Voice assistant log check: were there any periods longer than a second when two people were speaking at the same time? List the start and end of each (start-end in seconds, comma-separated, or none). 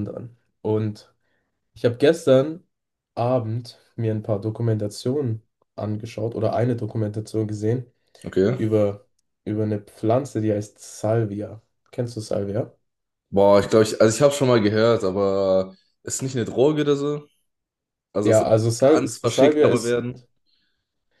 18.2-20.0